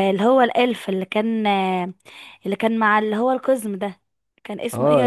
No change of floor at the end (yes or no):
yes